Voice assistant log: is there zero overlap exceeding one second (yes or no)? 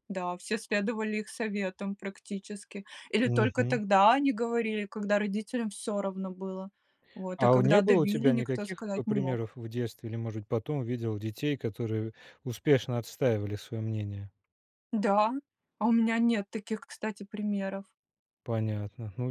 no